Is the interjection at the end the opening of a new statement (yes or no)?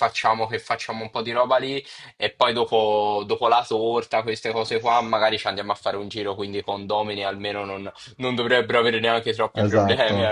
yes